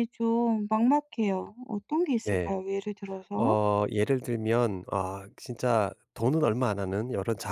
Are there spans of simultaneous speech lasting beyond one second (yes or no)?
no